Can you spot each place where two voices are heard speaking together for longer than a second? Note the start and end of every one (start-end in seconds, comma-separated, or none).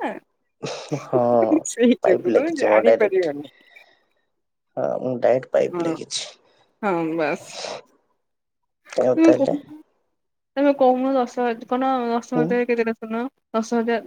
2.0-3.4